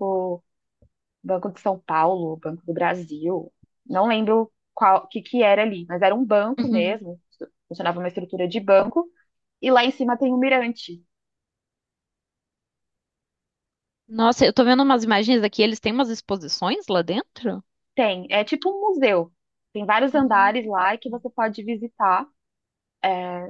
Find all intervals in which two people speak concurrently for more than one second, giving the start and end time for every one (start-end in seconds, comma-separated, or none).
none